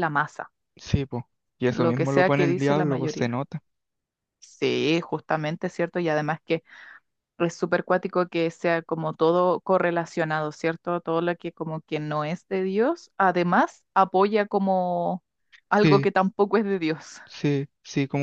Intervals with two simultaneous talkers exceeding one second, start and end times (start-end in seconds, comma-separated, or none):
1.7-3.4